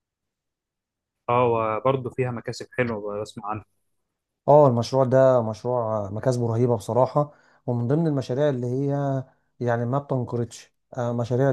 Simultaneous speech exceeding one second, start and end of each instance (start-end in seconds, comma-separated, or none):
none